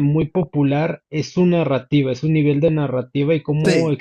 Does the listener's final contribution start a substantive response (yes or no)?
no